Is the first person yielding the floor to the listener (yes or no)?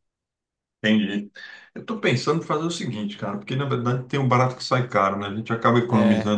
no